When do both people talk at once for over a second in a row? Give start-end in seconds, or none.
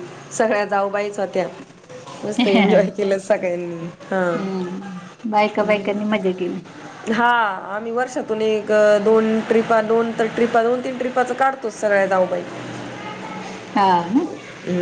none